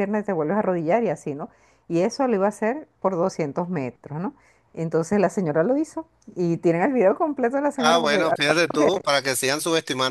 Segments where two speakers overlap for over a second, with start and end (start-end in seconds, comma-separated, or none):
none